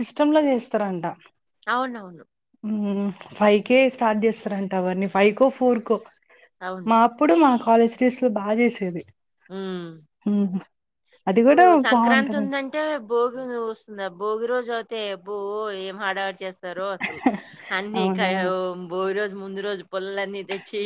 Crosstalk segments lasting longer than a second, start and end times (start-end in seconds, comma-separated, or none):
none